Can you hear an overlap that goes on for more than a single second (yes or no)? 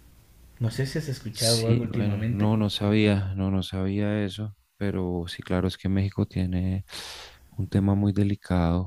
yes